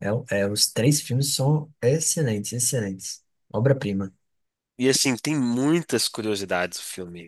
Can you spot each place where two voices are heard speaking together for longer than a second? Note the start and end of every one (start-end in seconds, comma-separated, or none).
none